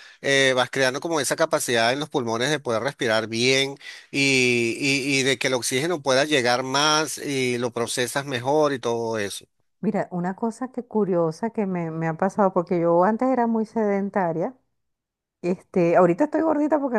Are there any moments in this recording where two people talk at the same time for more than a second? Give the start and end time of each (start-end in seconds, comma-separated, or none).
none